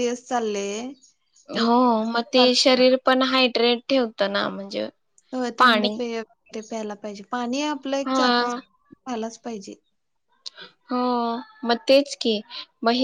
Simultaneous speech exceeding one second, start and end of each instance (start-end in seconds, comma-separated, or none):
none